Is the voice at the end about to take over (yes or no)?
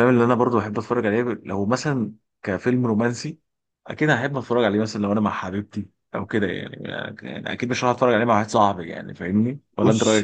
yes